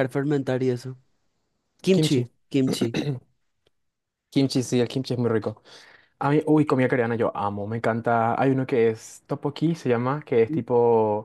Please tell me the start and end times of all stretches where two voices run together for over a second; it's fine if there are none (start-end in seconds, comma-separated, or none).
none